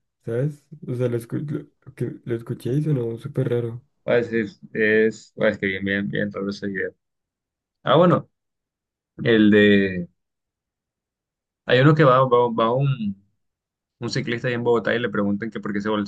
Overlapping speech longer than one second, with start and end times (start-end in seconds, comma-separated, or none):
none